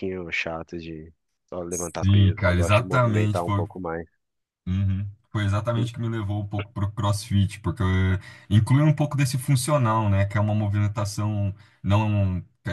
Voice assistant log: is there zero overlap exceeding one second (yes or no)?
no